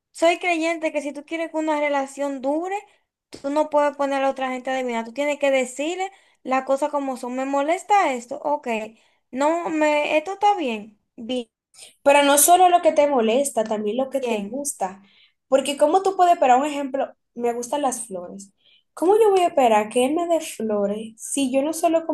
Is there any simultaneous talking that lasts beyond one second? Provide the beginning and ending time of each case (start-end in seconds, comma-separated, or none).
none